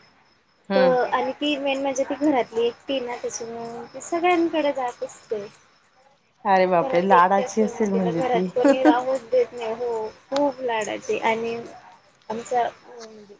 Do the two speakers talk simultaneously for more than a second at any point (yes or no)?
yes